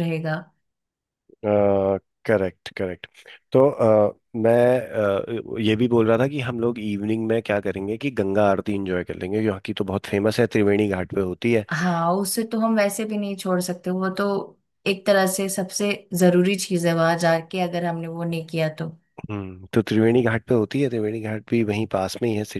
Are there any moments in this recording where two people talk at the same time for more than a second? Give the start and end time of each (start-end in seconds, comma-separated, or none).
none